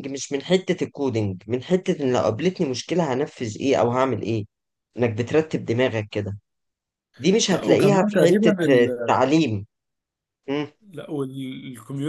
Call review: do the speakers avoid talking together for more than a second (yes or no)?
no